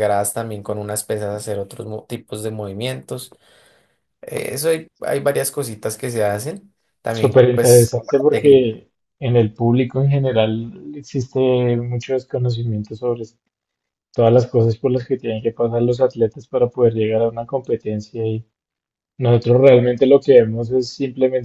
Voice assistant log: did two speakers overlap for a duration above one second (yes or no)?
yes